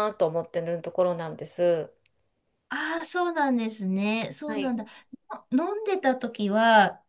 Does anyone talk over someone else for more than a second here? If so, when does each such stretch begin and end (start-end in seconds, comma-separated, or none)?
none